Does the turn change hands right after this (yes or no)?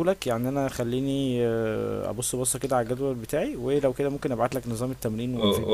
yes